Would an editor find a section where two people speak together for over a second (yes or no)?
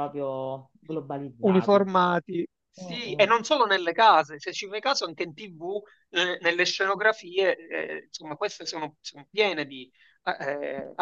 no